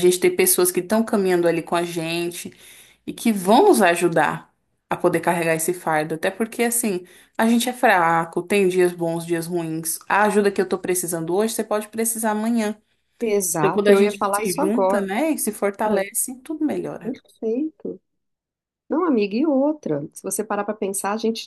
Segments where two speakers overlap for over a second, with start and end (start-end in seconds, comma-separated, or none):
13.5-15.0